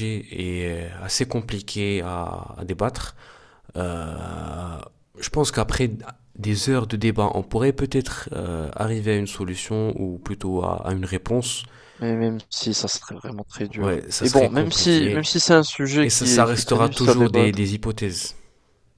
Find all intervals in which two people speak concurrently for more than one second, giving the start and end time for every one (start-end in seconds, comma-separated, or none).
13.8-15.2, 16.0-17.6